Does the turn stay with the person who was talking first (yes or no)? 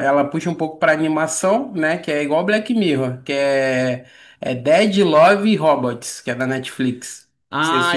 no